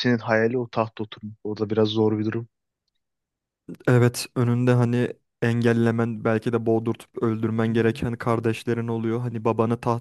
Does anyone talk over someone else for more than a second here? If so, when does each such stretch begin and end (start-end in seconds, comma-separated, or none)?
none